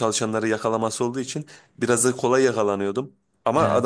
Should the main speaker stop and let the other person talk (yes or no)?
no